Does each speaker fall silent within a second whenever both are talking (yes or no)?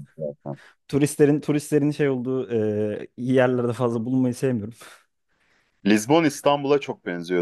yes